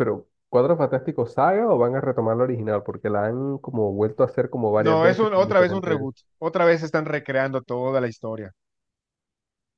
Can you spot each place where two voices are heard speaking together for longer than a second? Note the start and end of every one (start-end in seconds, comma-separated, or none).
4.8-6.1